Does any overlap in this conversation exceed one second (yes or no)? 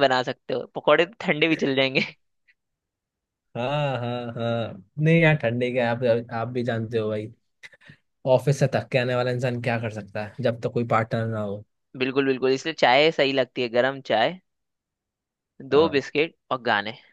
no